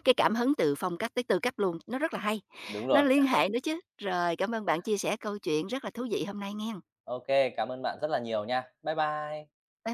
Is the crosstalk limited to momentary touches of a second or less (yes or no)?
yes